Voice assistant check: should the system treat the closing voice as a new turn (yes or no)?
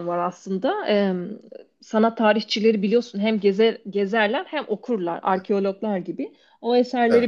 no